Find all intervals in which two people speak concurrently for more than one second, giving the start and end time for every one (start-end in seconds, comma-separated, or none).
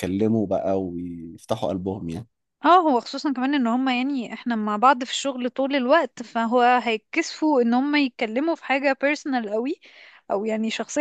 none